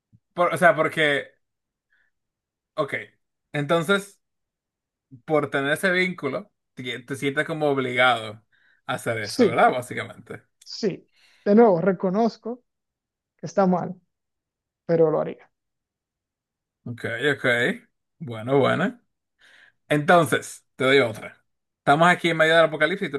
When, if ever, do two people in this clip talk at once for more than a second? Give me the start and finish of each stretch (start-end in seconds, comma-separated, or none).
none